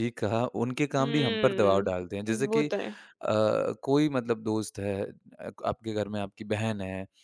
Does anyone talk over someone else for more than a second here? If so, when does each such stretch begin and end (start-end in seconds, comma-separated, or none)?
1.0-2.7